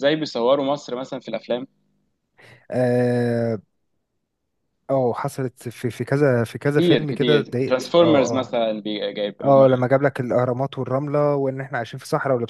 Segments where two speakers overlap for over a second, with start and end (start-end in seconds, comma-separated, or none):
6.7-8.6